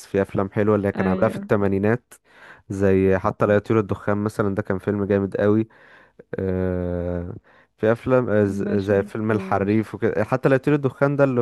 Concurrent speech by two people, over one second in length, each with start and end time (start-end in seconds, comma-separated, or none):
8.6-9.8